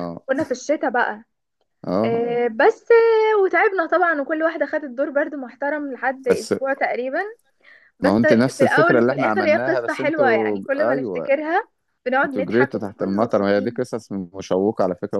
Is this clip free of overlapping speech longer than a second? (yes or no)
no